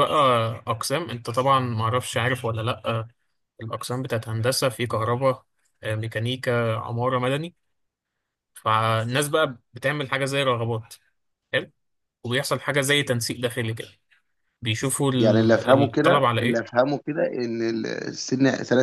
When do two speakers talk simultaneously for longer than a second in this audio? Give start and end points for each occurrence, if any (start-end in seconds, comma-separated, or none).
15.2-16.6